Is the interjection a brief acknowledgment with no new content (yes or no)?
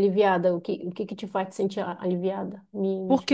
no